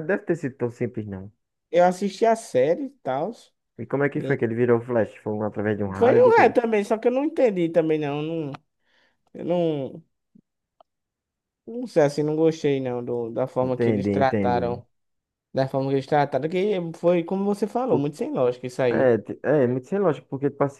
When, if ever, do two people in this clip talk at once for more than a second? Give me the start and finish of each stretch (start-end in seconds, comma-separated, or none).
13.6-14.8